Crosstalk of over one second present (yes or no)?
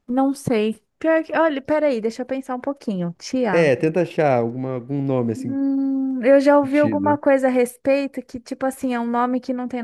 no